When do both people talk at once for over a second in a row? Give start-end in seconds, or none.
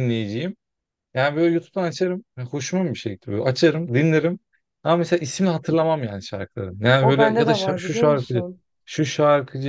7.0-8.4